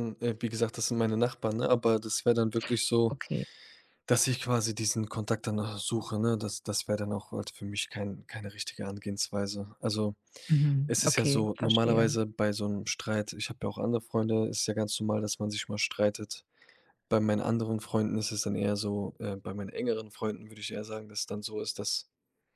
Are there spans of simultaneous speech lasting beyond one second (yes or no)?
yes